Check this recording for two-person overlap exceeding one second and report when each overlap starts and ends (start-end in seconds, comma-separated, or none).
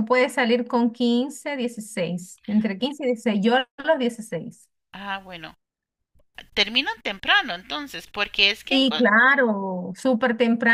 none